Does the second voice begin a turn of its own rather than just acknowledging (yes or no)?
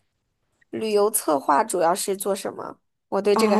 yes